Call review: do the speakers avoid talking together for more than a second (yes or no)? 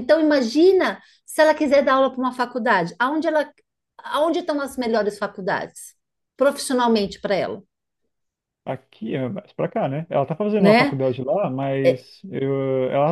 yes